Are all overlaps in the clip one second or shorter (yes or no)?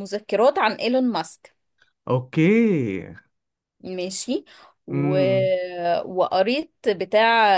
yes